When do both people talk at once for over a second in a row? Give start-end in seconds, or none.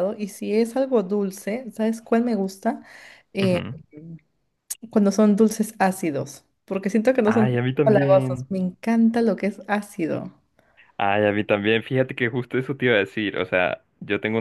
7.2-8.5